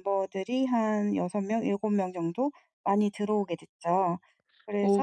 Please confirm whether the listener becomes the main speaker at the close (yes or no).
yes